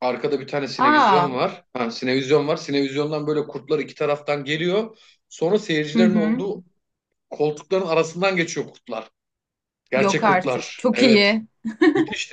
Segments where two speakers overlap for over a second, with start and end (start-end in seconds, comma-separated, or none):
9.9-11.3